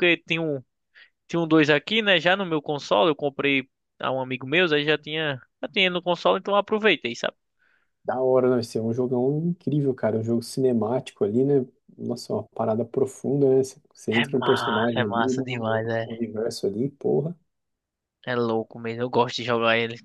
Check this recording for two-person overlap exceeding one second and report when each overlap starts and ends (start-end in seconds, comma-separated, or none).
14.1-15.8